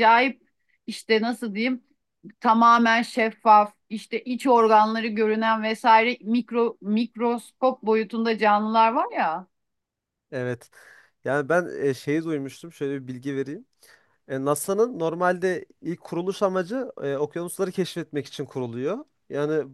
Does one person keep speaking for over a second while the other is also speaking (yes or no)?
no